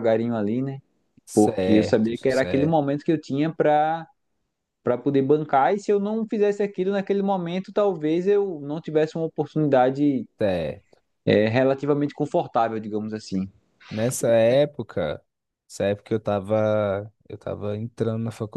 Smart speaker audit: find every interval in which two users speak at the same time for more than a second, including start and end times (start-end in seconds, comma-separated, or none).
1.3-2.8